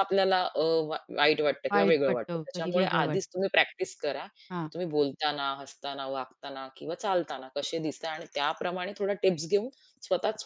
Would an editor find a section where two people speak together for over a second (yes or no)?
yes